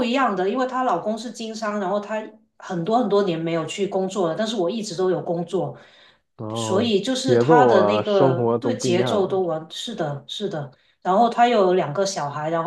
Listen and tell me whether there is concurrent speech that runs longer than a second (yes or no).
yes